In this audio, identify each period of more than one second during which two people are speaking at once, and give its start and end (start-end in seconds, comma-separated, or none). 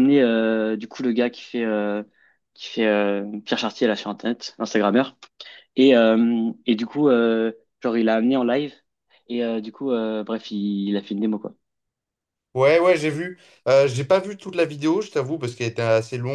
none